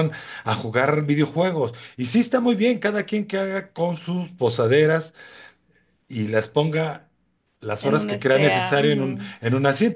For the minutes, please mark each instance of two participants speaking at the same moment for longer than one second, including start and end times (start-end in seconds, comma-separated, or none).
7.8-9.3